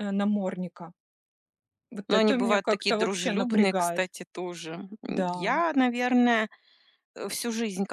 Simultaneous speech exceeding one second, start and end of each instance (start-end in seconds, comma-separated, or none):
2.1-4.1